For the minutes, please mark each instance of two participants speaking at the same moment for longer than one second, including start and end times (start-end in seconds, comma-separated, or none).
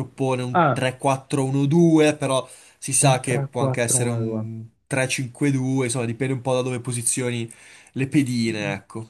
3.0-4.4